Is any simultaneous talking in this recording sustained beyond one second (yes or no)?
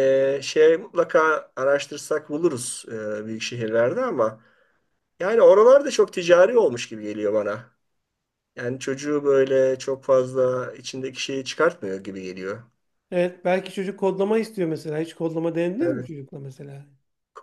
no